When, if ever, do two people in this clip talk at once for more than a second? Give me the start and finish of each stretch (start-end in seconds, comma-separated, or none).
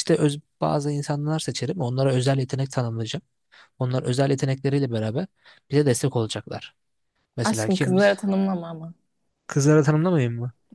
none